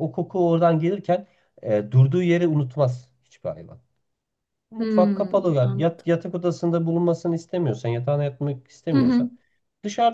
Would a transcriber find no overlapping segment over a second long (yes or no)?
no